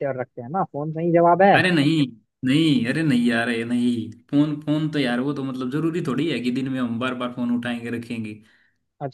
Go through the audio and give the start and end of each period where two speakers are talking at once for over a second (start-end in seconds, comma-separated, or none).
none